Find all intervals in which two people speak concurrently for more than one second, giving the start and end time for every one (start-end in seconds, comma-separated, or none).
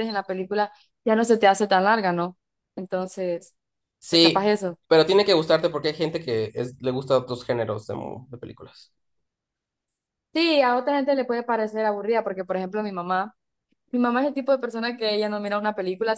none